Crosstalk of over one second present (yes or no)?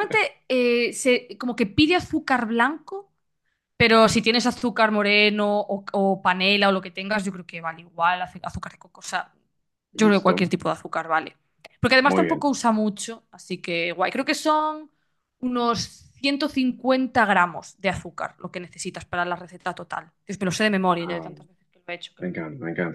no